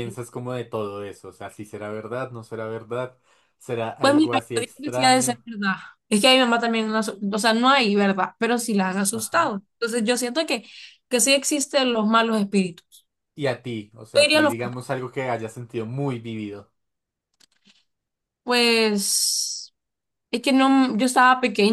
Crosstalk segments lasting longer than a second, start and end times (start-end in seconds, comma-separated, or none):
4.0-5.4